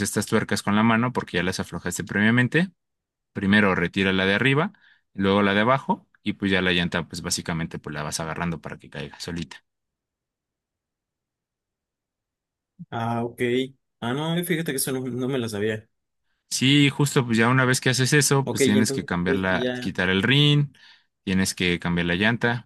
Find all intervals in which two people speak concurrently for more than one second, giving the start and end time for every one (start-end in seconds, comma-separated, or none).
18.4-19.9